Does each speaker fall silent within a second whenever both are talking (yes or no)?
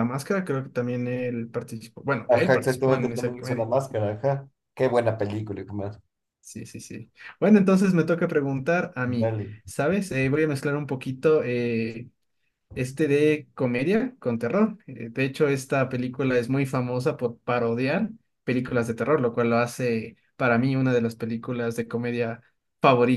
no